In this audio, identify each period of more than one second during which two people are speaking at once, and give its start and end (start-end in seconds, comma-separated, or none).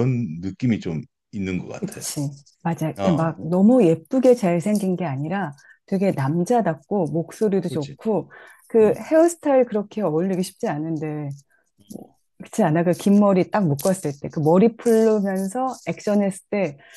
none